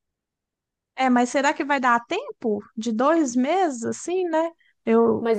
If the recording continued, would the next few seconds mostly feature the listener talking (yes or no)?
yes